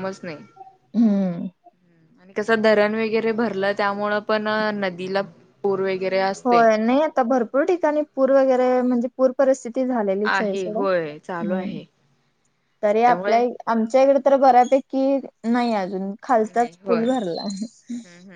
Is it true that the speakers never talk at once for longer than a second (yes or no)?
no